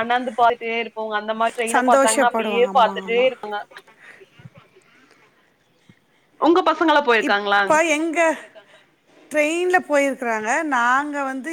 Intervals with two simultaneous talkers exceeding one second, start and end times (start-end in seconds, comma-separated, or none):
1.8-3.3